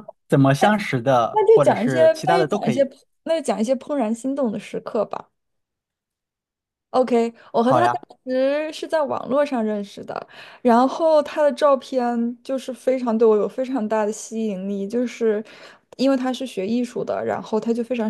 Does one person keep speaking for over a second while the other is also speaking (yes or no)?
yes